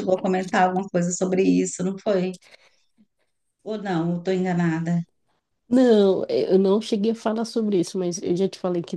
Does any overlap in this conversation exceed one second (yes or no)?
no